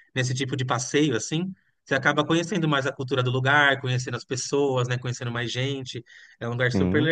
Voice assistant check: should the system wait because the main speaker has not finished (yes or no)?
yes